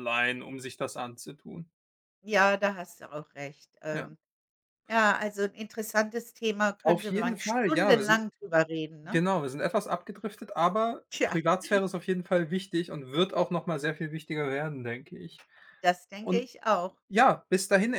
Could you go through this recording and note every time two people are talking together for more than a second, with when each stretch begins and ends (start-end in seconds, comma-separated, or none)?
6.8-8.2